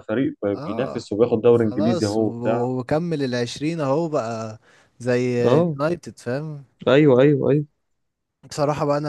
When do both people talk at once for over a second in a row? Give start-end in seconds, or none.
0.6-2.7